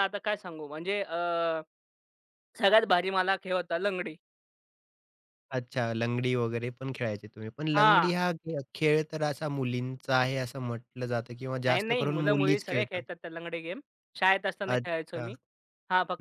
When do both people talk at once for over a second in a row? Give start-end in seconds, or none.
11.7-13.0